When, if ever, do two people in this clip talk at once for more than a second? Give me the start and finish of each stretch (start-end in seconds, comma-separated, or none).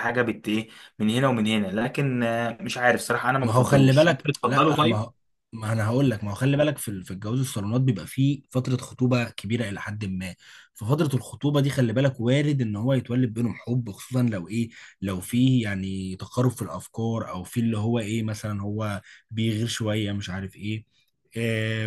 3.4-5.0